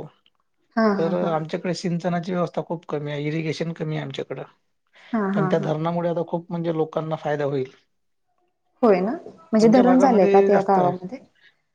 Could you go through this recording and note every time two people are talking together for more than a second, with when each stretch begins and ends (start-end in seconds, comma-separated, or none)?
9.6-10.9